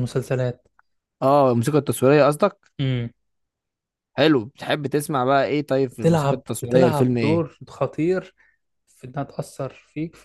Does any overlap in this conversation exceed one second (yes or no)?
yes